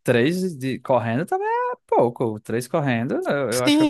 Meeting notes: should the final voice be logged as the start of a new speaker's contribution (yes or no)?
yes